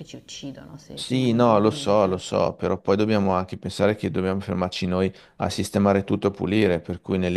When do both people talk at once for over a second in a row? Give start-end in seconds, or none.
0.9-2.2